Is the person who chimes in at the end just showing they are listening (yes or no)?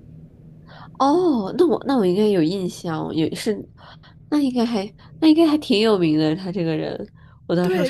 no